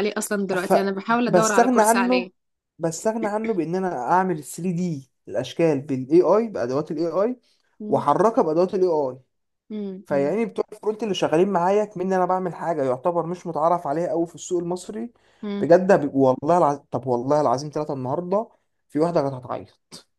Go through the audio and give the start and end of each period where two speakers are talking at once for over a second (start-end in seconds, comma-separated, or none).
0.6-2.3